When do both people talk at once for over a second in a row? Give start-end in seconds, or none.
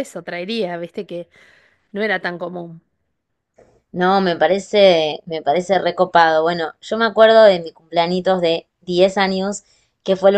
none